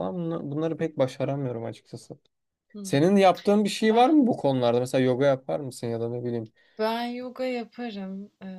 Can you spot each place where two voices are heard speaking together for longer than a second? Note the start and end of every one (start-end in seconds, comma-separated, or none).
none